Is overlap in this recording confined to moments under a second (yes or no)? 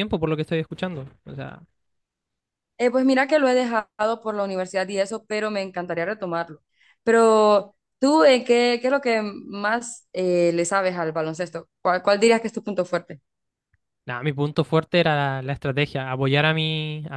yes